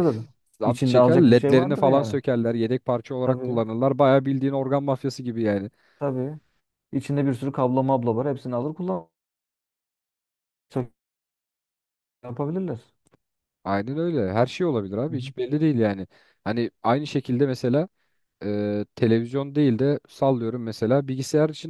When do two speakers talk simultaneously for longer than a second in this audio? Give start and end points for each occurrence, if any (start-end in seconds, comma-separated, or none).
0.6-2.1